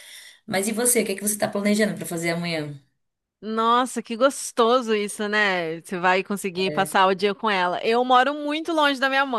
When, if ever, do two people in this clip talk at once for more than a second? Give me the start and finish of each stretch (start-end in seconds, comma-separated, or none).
none